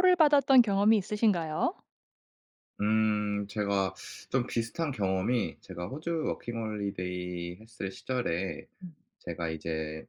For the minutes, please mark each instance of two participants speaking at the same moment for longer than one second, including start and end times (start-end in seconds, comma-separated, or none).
none